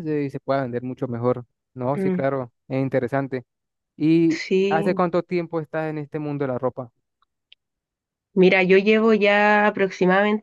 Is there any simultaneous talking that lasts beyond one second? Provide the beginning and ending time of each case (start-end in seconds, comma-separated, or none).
none